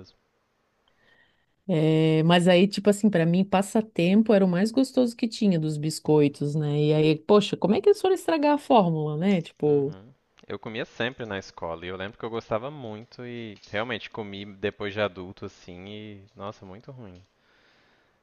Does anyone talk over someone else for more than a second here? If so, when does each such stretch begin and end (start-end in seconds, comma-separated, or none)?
none